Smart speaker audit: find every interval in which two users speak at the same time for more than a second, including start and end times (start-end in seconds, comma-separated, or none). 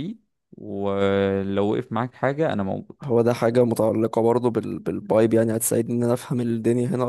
none